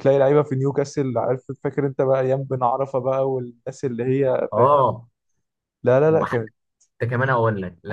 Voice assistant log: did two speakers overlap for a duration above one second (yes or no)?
no